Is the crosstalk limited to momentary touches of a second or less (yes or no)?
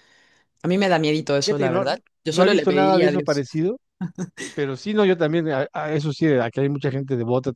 no